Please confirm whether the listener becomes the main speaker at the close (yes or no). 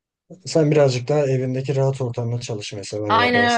yes